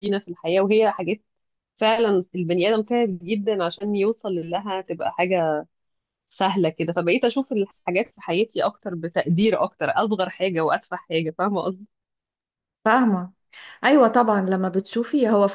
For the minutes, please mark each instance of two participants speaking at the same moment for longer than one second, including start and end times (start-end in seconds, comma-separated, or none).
none